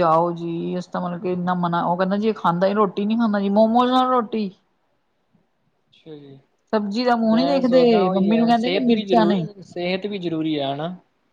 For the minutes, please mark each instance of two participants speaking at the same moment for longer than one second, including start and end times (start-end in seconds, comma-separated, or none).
7.3-9.4